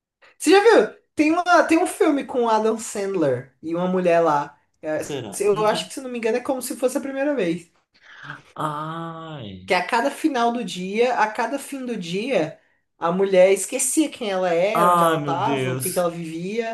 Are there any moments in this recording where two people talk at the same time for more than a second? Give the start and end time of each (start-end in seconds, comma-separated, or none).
14.7-16.1